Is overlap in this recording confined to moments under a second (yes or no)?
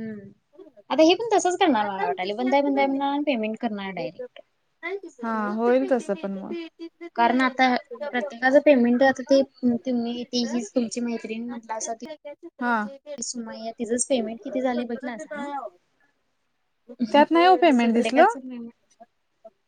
no